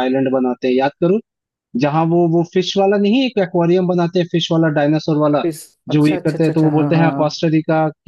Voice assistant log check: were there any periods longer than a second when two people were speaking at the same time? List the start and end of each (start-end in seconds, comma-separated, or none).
5.9-7.4